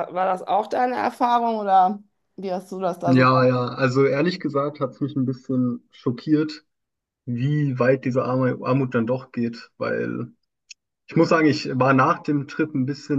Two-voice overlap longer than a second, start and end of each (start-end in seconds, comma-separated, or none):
none